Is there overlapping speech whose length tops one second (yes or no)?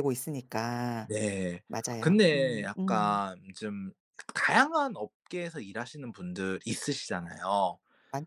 yes